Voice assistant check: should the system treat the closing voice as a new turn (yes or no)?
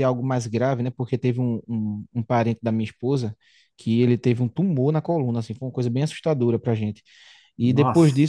no